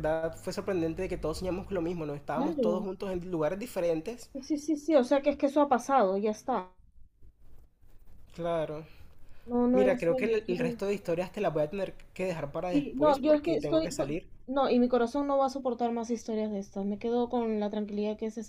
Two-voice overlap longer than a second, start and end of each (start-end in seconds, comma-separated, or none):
9.7-11.0, 12.7-13.9